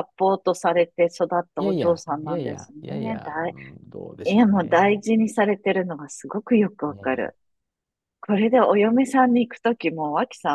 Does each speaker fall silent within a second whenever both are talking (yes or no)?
no